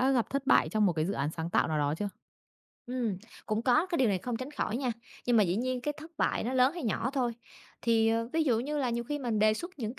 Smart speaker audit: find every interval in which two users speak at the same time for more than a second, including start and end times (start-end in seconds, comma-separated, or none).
none